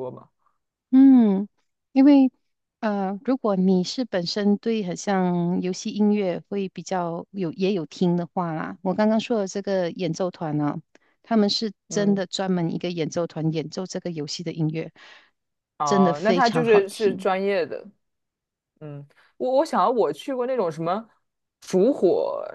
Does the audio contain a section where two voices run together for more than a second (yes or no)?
yes